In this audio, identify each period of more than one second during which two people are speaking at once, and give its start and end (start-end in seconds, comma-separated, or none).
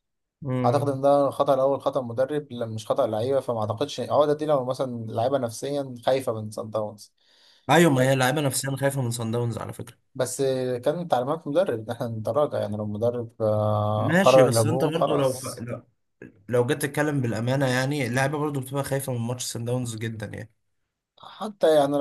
14.0-15.7